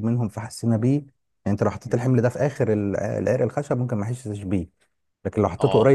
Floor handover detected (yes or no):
no